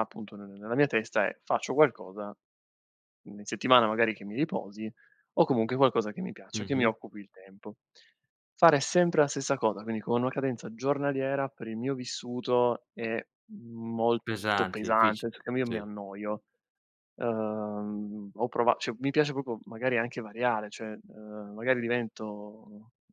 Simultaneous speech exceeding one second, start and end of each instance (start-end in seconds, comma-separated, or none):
14.3-15.9